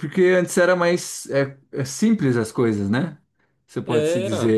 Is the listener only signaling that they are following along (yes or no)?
yes